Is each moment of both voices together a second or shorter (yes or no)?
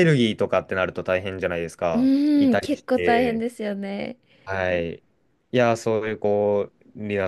no